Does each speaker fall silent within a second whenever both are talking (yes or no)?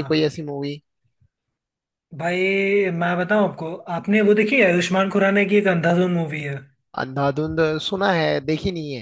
yes